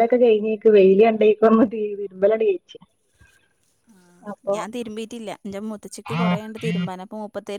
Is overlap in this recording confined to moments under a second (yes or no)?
yes